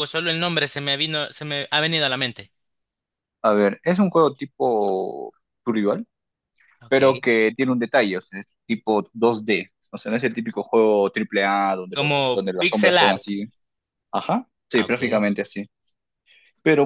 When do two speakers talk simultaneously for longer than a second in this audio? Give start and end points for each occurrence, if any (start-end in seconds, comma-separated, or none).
11.9-13.3